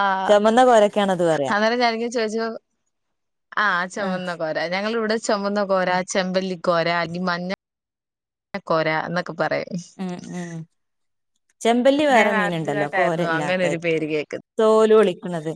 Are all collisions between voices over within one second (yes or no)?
no